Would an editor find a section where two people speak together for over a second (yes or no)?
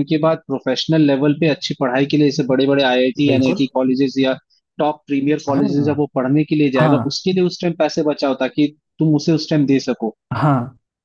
no